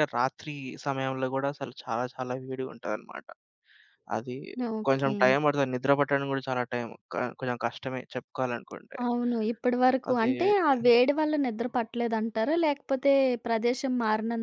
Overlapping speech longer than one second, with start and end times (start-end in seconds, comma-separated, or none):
none